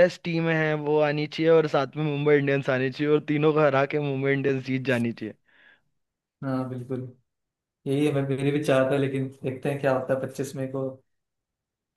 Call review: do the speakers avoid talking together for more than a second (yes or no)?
yes